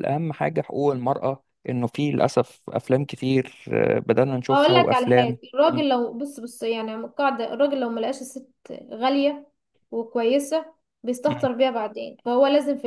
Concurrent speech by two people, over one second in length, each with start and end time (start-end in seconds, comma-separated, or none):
4.5-5.9